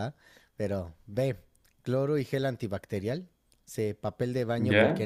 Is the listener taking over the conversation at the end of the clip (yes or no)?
no